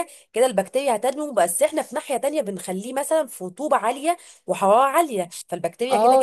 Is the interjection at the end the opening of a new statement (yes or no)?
yes